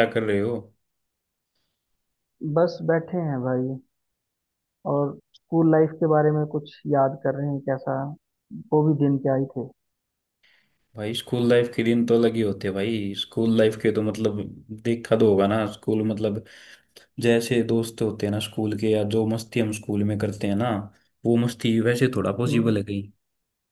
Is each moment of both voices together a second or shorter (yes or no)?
yes